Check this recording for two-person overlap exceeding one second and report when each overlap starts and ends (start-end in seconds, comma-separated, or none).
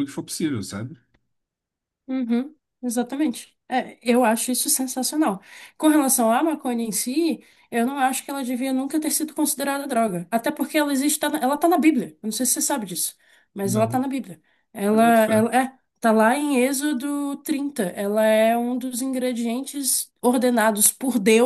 none